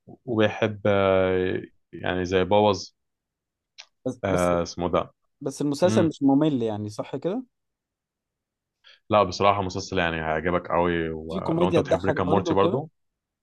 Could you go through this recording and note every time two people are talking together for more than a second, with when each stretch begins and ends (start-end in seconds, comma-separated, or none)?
11.3-12.8